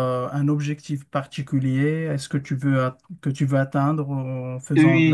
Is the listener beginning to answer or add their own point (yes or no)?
yes